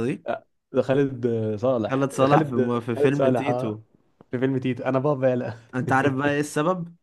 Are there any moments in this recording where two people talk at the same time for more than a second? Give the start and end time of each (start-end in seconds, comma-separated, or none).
1.9-3.8